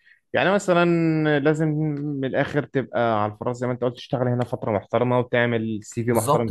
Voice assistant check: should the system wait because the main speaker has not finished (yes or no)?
no